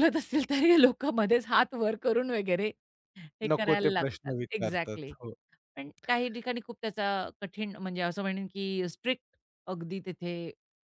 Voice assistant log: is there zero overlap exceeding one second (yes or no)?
no